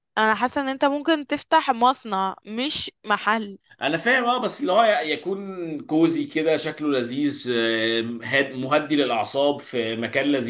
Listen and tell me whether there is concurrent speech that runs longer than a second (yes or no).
no